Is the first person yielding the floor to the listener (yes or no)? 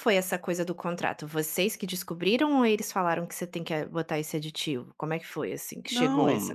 yes